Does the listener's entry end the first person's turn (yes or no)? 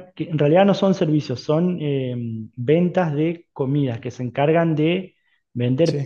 no